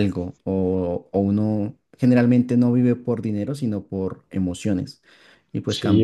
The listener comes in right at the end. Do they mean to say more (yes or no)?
yes